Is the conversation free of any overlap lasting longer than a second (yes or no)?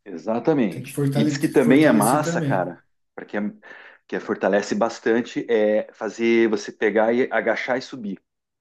no